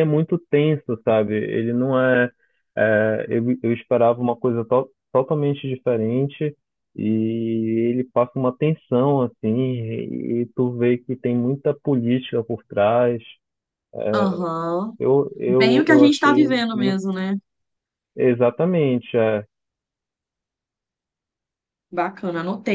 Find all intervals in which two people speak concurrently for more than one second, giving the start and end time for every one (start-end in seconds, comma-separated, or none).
15.4-17.0